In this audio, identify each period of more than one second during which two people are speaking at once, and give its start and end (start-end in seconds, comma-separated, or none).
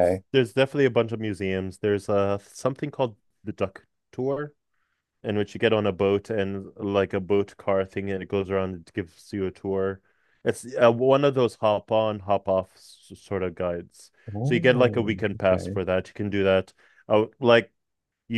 14.3-15.8